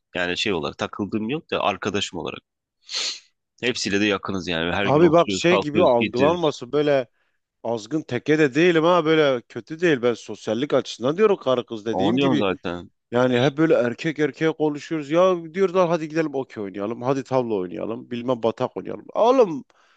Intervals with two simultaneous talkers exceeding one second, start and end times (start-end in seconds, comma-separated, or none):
4.8-6.5